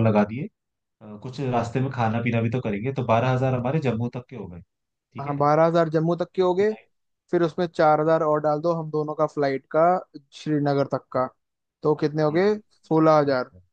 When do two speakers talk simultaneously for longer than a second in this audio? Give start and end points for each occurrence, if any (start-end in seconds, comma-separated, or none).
none